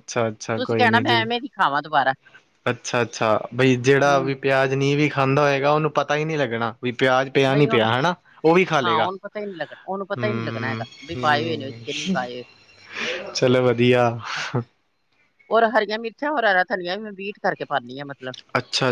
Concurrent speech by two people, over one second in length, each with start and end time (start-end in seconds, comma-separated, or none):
10.2-12.2